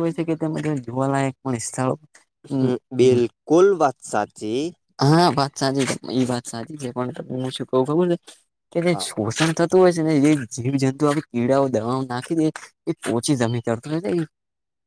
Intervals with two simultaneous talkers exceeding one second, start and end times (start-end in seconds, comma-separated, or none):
none